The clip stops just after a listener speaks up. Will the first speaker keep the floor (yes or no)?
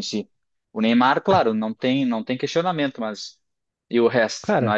no